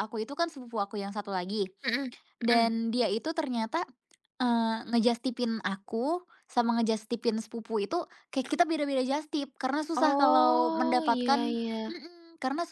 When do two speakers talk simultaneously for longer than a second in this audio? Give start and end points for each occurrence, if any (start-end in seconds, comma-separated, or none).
9.9-12.0